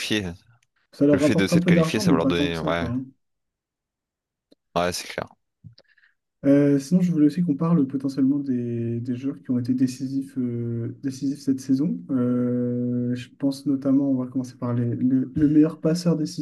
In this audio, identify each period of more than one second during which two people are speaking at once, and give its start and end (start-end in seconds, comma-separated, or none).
1.1-2.9